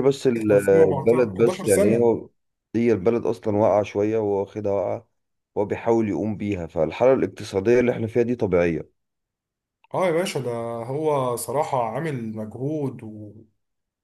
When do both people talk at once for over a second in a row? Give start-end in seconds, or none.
0.5-2.1